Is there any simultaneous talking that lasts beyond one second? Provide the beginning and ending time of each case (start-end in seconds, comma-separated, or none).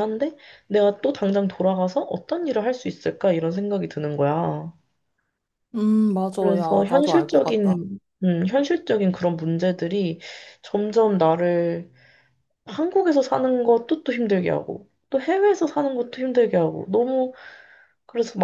6.4-7.8